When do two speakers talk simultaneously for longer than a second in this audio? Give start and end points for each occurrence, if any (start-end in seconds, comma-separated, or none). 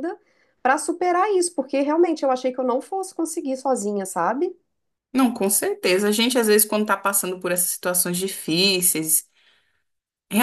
none